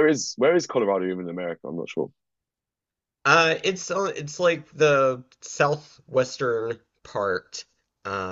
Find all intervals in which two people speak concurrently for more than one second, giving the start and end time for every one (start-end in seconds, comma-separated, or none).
none